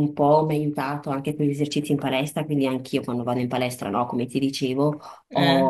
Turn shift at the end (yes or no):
no